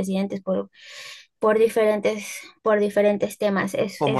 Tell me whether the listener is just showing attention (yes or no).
no